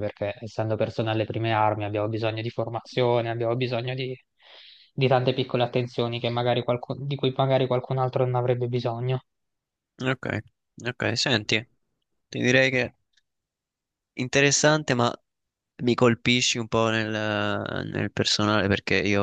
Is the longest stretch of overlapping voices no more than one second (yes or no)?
yes